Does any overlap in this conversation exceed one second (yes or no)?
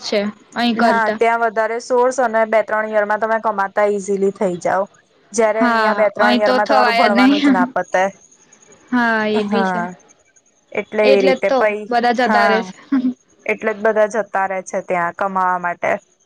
yes